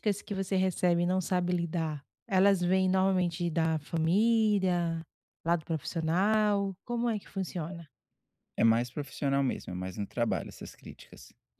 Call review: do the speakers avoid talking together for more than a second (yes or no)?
yes